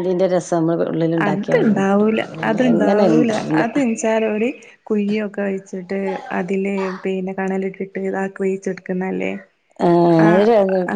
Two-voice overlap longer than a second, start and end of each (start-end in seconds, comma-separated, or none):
1.2-3.6